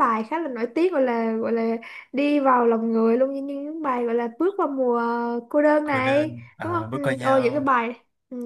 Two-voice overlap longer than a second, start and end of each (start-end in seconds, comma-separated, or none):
5.8-7.7